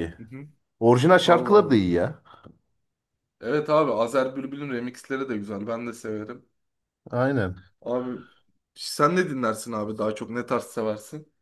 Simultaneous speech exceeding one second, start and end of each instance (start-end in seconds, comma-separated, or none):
none